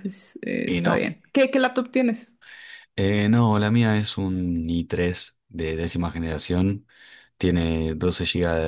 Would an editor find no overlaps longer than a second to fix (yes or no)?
yes